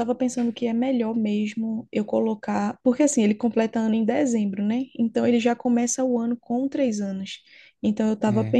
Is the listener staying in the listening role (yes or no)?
yes